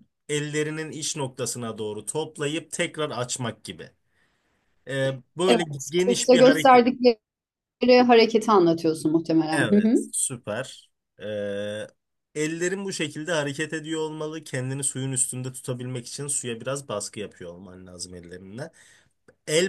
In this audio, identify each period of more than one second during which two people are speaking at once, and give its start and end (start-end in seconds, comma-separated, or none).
5.5-6.8